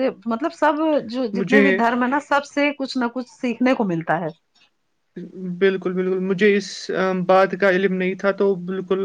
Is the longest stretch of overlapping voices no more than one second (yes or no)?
yes